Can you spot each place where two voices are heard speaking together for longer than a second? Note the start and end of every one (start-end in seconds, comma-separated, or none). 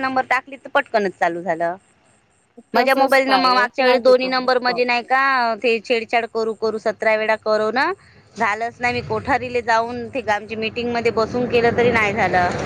2.8-4.5